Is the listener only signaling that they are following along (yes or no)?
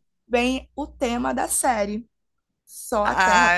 no